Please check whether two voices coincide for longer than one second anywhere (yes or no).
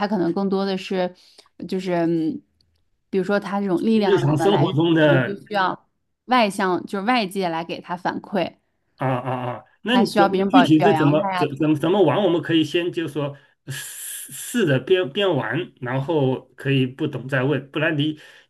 yes